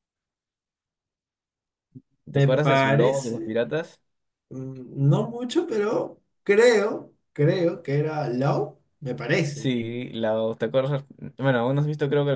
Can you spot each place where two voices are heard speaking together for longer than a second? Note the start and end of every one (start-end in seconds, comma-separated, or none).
2.3-3.5